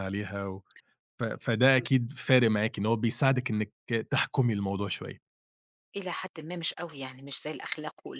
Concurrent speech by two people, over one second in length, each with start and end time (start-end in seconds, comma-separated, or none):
none